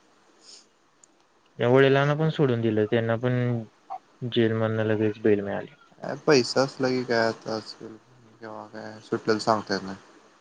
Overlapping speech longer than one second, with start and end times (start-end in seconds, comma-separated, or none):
none